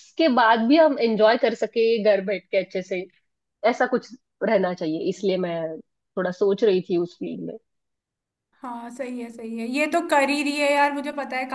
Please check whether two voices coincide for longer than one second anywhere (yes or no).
no